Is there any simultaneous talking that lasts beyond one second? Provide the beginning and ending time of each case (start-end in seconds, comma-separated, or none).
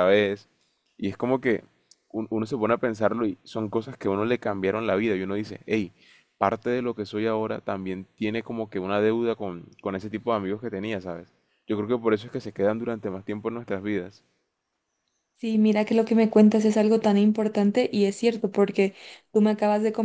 none